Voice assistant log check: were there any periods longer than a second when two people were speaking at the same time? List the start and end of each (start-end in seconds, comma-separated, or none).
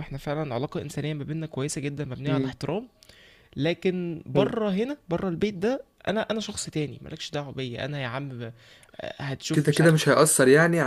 none